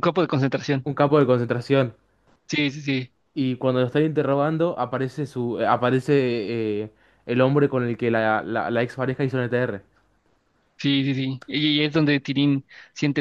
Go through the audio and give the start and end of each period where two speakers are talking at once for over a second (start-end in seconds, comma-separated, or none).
none